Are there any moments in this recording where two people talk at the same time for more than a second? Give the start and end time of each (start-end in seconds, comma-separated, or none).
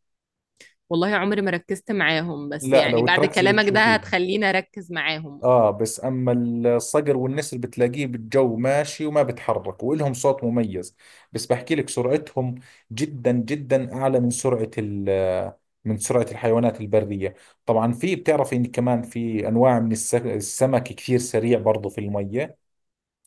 2.6-4.0